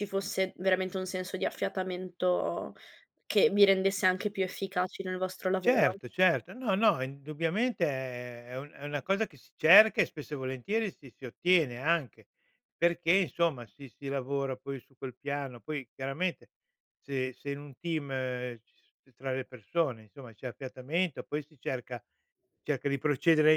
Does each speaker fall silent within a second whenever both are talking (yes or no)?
yes